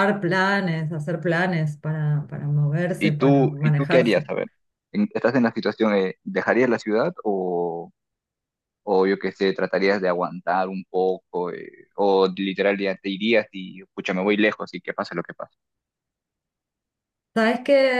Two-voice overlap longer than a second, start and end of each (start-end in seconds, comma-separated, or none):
3.0-4.3